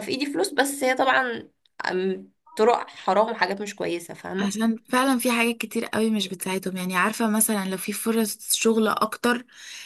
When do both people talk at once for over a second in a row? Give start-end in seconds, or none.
none